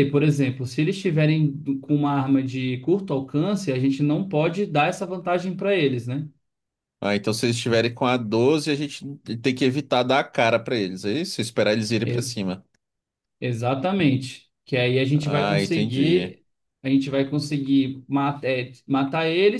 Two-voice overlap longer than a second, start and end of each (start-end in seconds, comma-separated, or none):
15.1-16.4